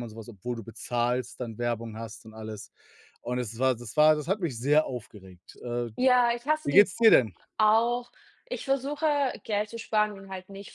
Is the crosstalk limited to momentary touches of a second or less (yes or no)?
yes